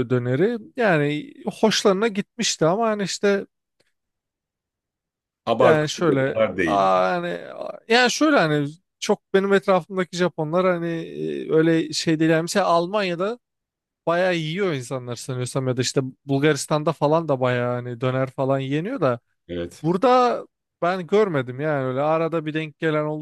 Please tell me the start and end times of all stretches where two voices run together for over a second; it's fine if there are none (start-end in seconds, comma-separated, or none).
5.6-6.9